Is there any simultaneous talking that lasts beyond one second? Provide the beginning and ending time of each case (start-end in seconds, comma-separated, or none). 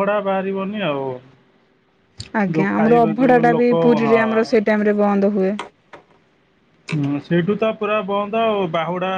2.5-4.6